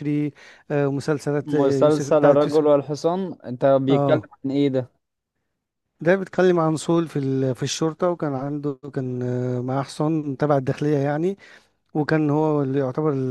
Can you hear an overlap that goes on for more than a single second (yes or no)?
yes